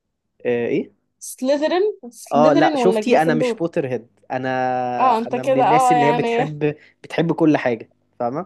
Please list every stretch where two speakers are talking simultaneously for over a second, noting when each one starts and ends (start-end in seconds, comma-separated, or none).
2.3-3.6, 5.3-6.5